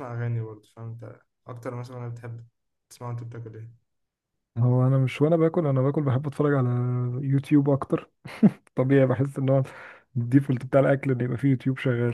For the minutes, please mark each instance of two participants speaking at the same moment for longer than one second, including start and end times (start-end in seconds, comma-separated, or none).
none